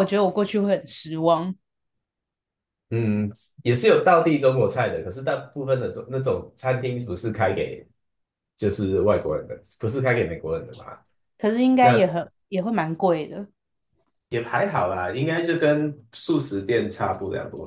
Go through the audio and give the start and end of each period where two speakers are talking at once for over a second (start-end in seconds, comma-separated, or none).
none